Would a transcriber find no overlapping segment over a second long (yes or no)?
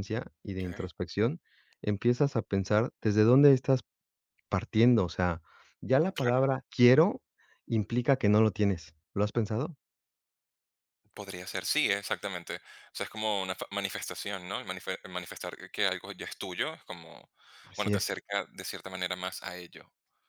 yes